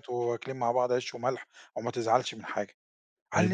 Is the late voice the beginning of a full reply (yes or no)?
yes